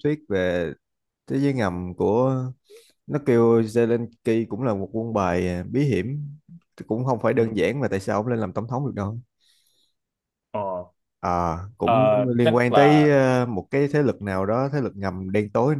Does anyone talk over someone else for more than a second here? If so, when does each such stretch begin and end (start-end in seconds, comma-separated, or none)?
11.8-13.2